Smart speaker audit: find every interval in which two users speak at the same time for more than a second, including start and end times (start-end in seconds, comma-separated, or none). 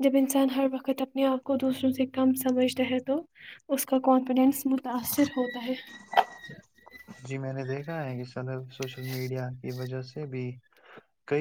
none